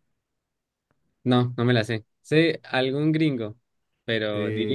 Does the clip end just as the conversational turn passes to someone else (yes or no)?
yes